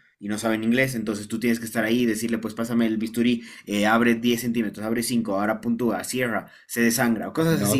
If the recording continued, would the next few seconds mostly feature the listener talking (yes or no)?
yes